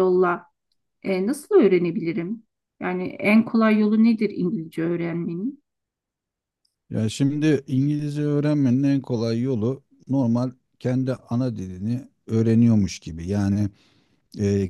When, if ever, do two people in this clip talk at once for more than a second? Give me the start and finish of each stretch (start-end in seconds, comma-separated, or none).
none